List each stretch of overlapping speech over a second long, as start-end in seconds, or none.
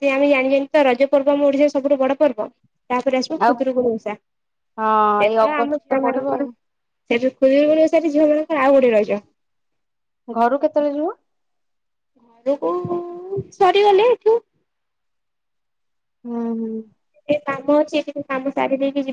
4.8-6.4